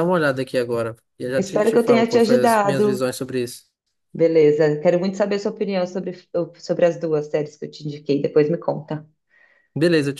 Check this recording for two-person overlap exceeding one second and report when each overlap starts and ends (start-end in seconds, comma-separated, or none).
1.4-3.0